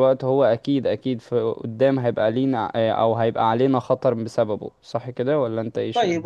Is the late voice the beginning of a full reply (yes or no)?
yes